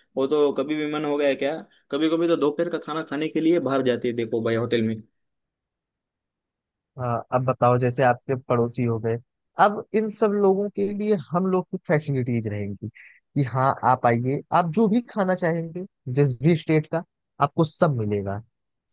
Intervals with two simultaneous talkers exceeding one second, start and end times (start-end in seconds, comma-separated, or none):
none